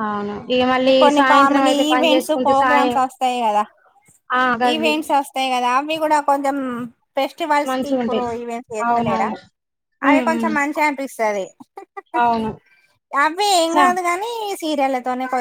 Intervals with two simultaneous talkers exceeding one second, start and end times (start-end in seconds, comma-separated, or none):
1.0-3.0